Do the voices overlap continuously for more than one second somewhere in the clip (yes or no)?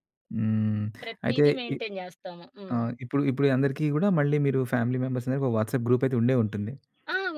no